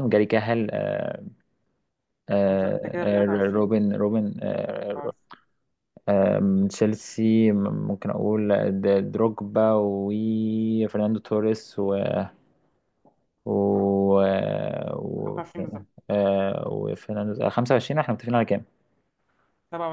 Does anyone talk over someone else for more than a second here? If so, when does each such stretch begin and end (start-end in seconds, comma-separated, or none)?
2.5-3.7